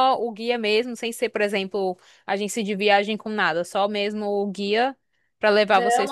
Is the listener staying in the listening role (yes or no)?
no